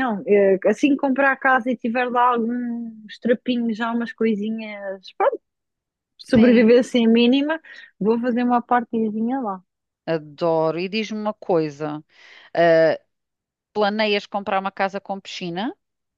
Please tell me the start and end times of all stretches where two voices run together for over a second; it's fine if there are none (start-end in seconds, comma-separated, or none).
none